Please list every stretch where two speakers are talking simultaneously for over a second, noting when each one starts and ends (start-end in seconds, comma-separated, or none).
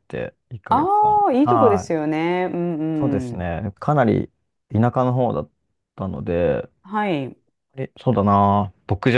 0.7-1.9